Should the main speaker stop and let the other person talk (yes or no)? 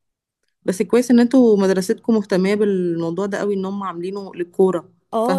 yes